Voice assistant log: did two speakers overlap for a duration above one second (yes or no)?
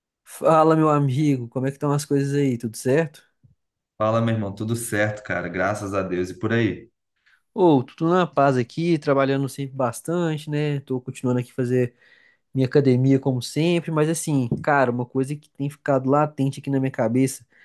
no